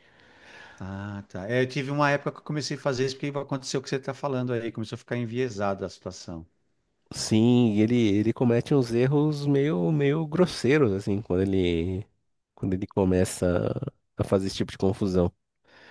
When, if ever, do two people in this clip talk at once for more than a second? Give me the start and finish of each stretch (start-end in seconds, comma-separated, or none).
none